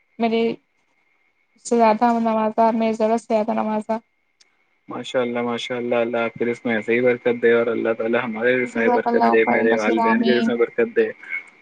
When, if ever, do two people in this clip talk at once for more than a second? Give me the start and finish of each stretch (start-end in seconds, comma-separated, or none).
8.7-10.5